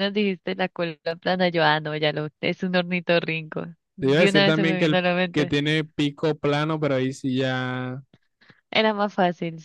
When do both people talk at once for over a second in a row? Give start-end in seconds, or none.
4.0-5.5